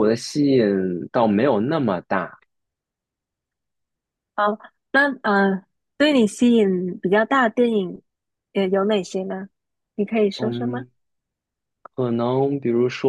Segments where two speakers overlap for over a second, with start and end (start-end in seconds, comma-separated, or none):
none